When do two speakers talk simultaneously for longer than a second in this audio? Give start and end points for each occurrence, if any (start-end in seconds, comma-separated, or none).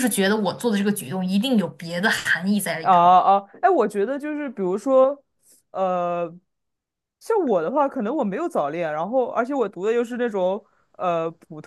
none